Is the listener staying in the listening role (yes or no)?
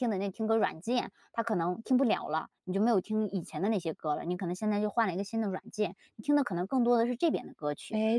no